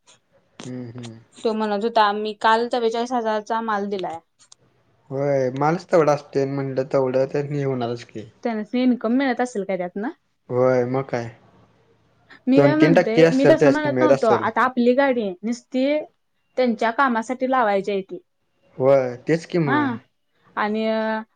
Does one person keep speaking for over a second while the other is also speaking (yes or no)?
yes